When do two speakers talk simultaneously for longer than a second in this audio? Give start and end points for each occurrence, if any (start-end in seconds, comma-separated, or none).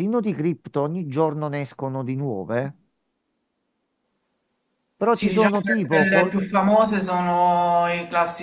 5.1-6.3